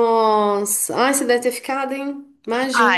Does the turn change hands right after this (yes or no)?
yes